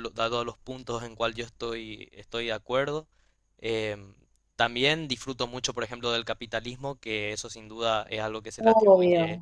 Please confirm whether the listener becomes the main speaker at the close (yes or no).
no